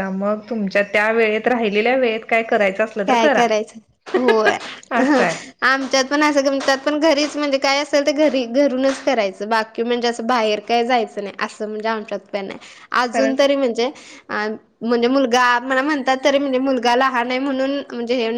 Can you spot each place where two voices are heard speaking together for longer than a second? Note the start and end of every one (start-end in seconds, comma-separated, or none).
none